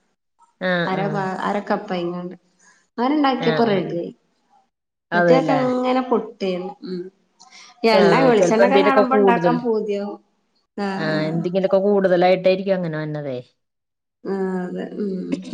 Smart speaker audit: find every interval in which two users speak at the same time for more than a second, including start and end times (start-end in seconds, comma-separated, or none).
8.0-9.5